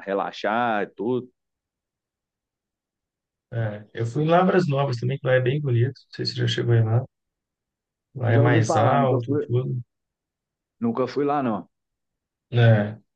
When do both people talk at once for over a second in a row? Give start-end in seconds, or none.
8.3-9.5